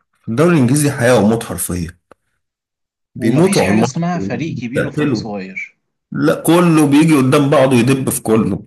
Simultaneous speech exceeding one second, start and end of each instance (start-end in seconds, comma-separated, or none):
3.2-5.2